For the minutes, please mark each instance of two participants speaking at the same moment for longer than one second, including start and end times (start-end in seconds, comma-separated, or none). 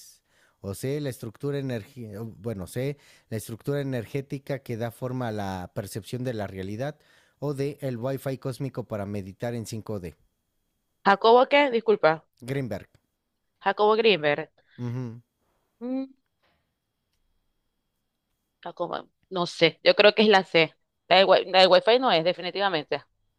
none